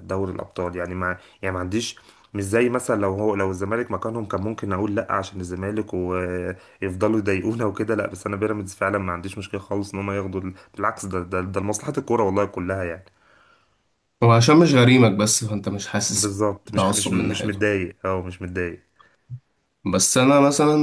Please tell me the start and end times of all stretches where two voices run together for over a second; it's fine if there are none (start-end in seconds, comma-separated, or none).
16.1-17.6